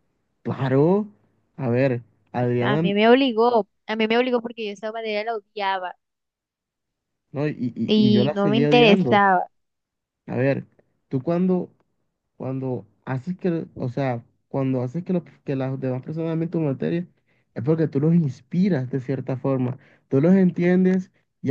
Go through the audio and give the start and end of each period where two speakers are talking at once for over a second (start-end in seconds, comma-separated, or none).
7.9-9.2